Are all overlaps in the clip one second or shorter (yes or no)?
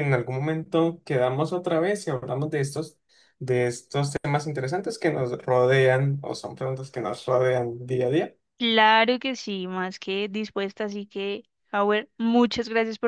yes